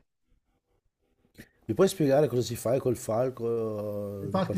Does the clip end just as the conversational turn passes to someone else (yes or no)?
yes